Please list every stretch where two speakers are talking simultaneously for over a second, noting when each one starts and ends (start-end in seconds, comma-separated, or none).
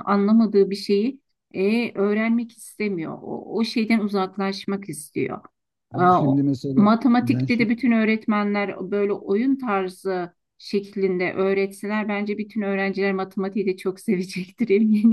5.9-7.7